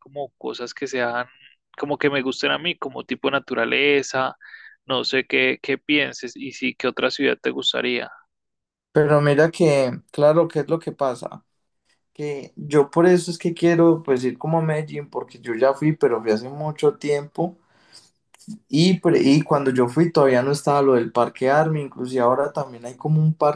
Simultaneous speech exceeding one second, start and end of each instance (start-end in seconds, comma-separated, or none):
none